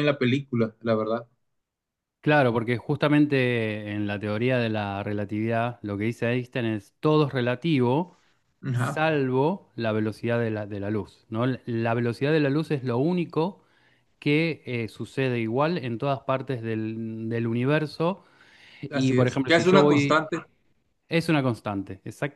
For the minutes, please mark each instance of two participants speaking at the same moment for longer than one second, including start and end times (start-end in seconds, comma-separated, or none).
18.9-20.2